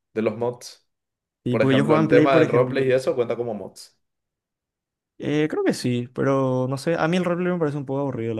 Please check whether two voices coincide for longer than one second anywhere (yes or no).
yes